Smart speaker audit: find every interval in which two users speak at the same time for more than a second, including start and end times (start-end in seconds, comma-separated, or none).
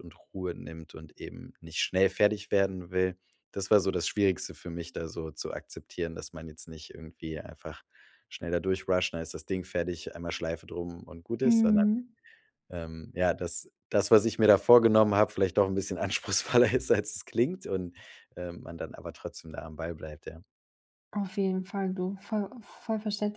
none